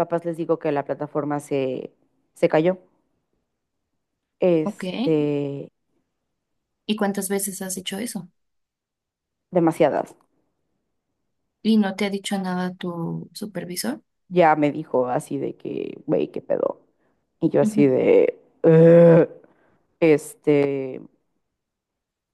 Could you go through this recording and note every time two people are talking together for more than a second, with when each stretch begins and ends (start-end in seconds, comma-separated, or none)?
none